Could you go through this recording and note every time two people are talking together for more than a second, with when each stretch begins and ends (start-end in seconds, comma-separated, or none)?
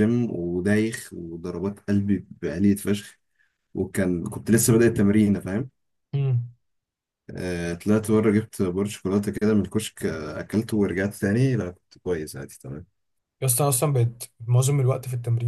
none